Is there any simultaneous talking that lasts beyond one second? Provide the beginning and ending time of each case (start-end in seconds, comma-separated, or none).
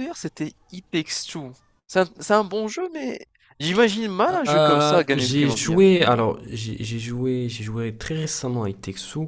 4.5-5.8